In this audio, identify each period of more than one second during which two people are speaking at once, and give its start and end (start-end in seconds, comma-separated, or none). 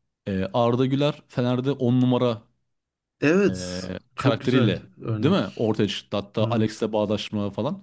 3.5-5.7